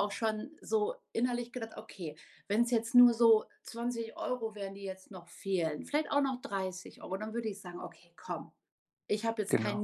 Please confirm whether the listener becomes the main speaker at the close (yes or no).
no